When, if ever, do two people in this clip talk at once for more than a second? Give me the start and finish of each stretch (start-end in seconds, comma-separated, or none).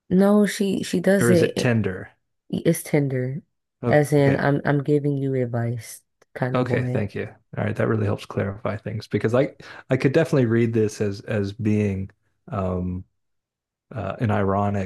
none